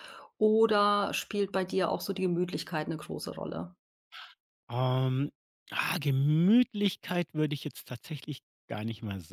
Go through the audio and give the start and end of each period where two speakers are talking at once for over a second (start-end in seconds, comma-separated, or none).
none